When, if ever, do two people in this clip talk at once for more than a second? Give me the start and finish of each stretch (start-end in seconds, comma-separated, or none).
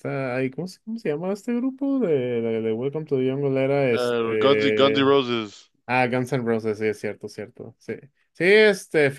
3.9-5.2